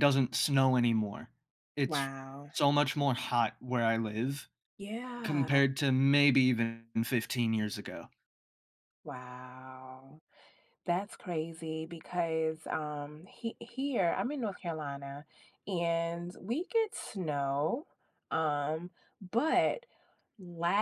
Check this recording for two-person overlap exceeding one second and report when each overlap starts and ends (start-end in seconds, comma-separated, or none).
none